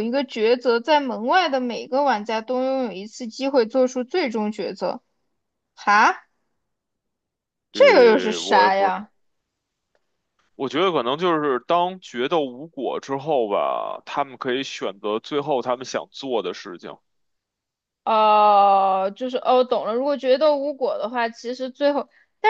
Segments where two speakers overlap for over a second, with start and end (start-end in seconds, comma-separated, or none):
7.7-8.9